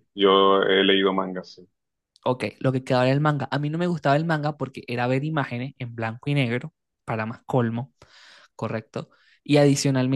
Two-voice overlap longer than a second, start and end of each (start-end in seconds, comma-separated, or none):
none